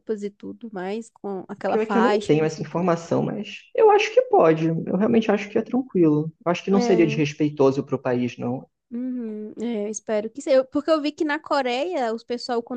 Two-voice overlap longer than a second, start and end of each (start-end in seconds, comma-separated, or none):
1.6-2.9